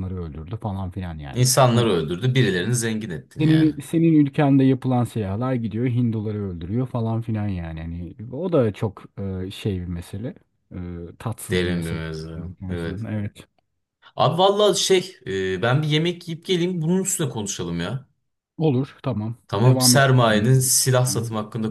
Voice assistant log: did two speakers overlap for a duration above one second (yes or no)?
yes